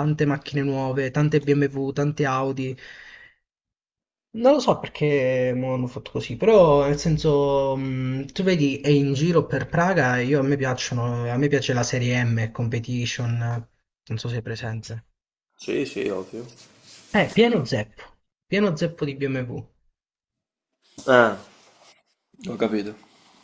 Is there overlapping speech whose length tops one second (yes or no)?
no